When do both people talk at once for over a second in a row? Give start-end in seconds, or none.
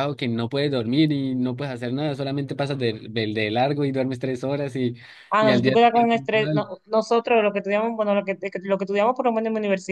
5.4-6.7